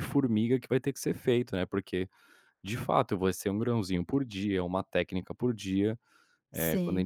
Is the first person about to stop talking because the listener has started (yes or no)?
no